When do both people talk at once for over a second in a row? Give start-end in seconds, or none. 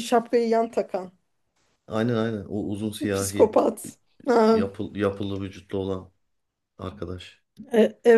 none